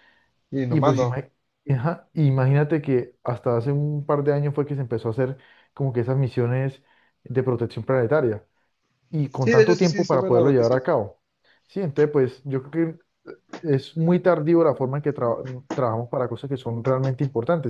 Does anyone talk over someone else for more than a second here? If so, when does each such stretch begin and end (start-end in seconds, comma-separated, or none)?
9.3-10.8